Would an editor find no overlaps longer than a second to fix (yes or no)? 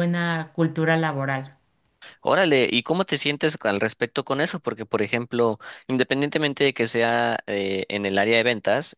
yes